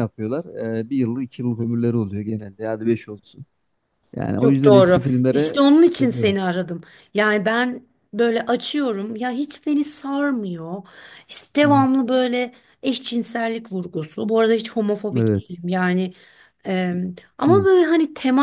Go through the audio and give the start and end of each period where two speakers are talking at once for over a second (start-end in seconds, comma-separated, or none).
4.4-6.4